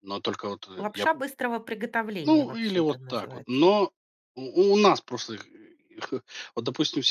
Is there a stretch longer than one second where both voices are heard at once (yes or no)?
yes